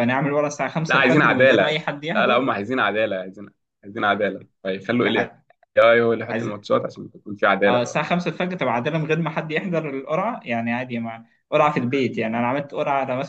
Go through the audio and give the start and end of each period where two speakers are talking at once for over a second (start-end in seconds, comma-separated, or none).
0.9-2.5